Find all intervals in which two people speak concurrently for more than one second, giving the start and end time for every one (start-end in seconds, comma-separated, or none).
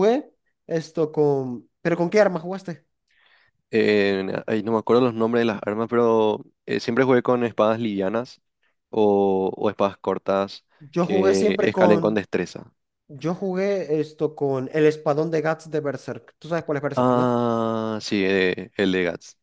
11.0-12.2